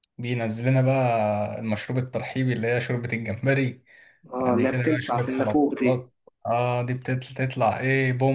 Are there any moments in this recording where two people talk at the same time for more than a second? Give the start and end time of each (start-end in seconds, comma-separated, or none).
4.4-6.1